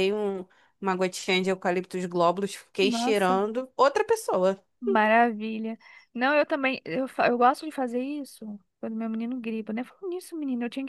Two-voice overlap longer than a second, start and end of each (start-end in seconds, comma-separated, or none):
none